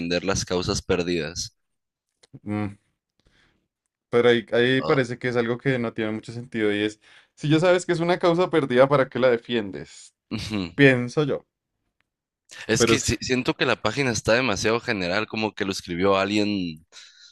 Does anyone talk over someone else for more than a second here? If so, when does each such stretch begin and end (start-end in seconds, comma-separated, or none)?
none